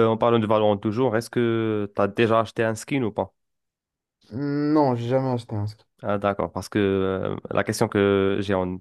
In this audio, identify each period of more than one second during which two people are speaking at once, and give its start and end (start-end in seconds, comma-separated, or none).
none